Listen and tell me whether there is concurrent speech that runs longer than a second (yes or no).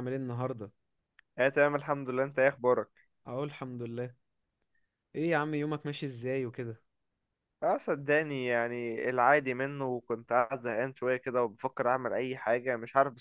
no